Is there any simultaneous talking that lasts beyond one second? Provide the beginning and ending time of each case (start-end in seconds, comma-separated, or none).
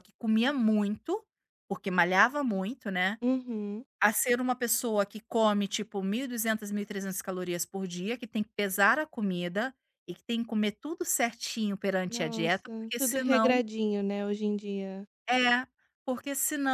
12.1-13.5